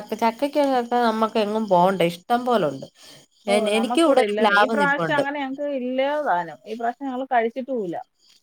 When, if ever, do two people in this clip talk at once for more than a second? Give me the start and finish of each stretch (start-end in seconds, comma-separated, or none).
none